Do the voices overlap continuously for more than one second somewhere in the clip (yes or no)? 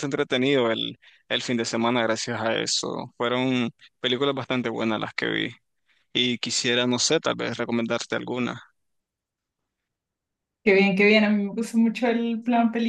no